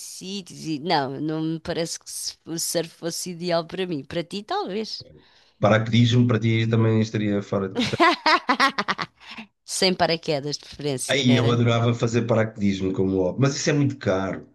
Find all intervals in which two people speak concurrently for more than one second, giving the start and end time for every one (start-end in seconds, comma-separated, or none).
none